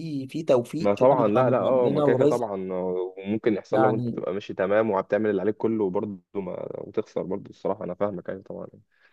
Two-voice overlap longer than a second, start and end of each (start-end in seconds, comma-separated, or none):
0.8-2.5